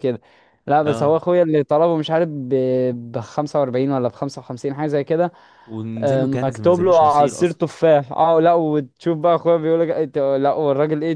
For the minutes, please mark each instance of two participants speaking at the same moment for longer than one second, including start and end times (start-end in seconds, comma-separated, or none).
6.0-7.6